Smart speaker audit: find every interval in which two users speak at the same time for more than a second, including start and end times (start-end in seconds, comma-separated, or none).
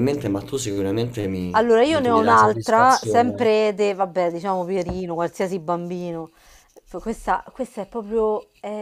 1.5-3.5